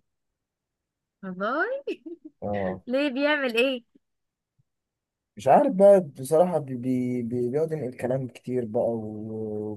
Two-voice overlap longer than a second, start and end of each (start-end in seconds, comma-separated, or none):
none